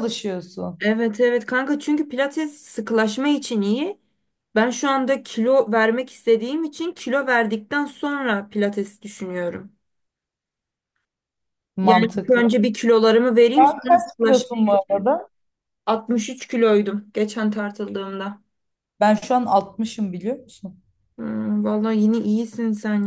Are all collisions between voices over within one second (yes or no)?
no